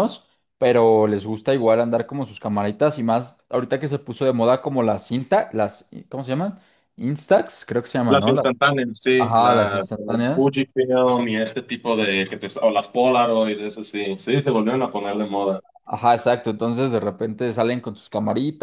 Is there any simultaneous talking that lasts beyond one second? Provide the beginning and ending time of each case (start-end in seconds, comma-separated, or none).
9.2-10.5